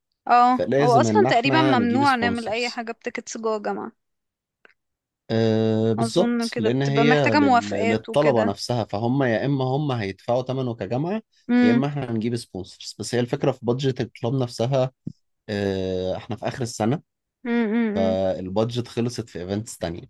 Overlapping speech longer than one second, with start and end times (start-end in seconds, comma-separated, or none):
0.5-2.9, 6.0-8.5